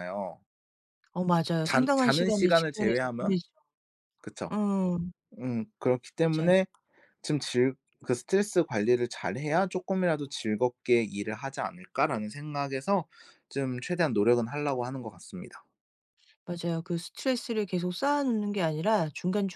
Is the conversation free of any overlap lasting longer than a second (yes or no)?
no